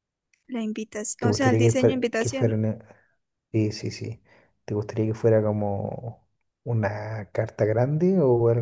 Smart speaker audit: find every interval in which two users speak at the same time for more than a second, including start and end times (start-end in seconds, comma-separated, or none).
1.2-2.5